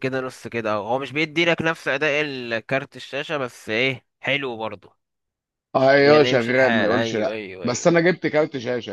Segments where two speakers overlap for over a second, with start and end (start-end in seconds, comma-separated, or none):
6.0-8.0